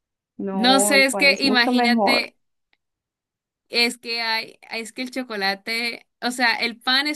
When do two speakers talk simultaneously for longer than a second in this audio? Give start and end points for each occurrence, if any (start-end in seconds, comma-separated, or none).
0.5-2.2